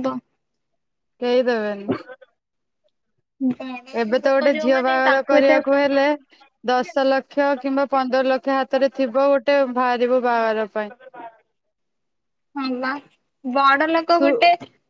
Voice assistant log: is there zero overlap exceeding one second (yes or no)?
no